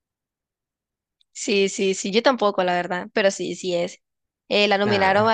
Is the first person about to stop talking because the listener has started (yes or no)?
no